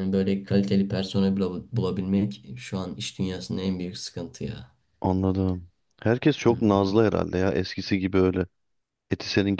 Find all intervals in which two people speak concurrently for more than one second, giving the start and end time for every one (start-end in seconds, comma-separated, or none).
none